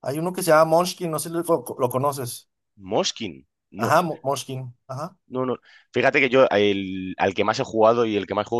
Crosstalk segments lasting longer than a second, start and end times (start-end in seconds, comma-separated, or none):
none